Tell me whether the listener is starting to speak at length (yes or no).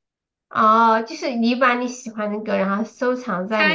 yes